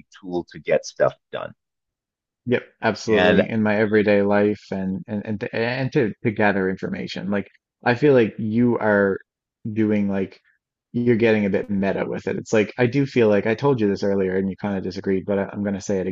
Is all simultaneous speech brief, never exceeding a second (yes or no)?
yes